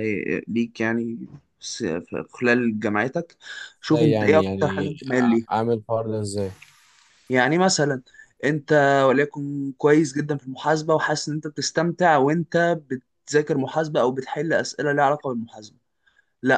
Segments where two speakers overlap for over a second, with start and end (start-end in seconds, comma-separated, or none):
3.9-5.5